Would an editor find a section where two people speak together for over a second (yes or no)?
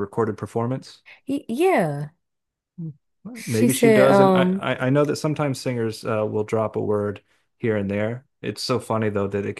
yes